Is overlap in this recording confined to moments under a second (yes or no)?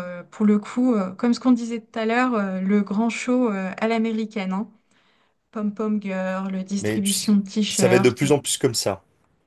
no